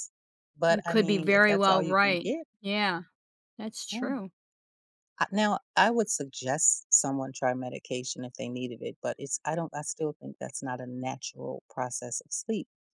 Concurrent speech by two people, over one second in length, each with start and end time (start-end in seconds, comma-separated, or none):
0.7-2.5